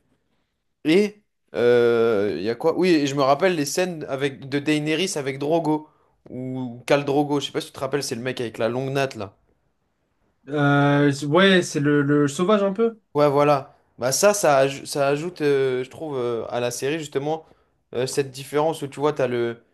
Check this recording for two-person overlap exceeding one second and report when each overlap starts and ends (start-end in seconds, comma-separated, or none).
none